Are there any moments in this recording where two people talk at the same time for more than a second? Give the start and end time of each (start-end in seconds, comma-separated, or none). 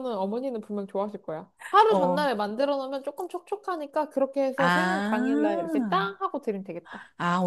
4.6-6.1